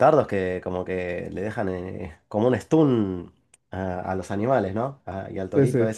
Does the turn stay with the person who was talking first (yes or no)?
yes